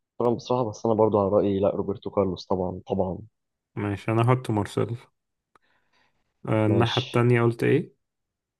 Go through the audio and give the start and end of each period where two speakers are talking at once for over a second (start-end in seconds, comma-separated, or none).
none